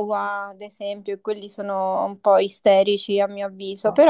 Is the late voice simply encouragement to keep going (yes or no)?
yes